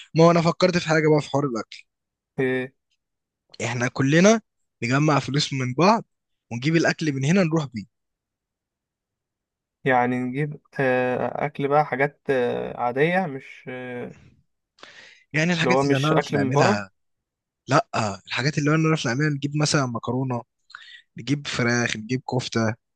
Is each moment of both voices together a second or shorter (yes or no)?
no